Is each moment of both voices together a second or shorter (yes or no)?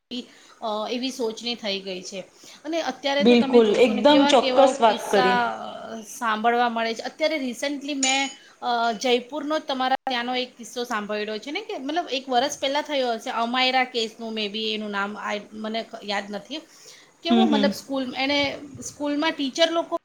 no